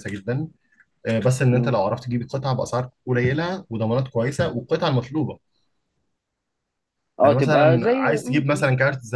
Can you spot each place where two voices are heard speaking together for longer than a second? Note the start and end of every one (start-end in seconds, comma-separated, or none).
7.2-8.7